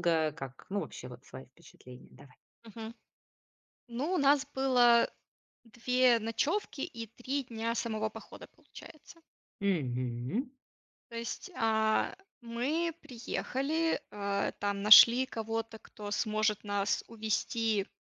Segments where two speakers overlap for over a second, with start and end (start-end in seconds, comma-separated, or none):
none